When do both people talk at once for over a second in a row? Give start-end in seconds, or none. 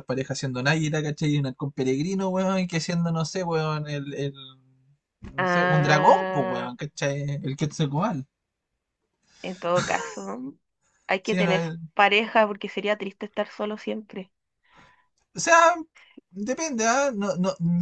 5.4-6.7